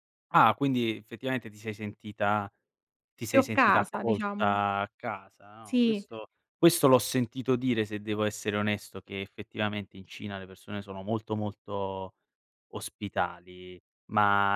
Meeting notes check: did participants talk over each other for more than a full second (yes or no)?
yes